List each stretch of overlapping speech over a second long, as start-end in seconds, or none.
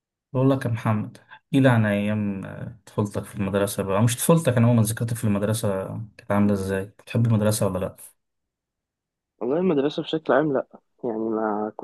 none